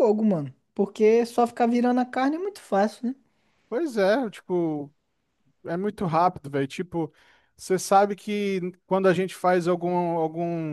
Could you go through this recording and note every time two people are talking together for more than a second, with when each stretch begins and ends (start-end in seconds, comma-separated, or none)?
none